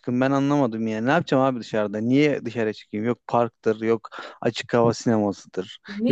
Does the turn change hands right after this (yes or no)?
yes